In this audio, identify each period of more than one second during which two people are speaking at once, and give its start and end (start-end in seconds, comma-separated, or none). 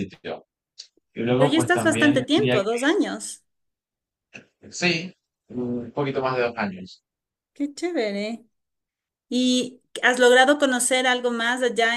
1.4-2.8